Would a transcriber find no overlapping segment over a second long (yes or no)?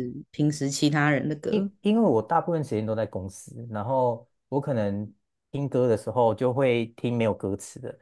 yes